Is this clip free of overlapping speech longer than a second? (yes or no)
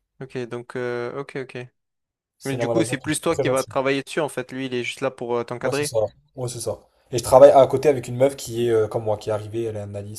no